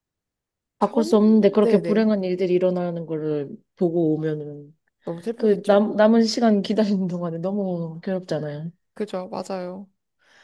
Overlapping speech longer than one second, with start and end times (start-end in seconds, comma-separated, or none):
0.8-2.1